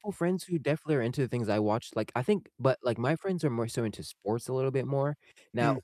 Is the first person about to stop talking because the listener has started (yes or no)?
no